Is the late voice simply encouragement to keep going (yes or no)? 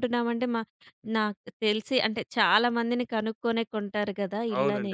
no